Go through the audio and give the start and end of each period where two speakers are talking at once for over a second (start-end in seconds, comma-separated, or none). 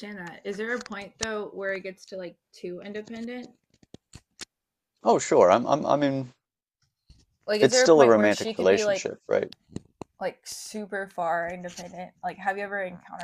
7.6-9.1